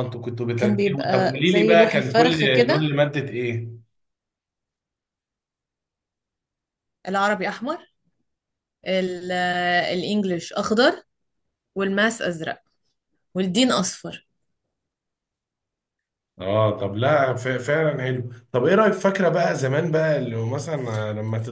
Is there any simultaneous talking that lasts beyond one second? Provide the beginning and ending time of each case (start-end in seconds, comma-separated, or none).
0.6-2.9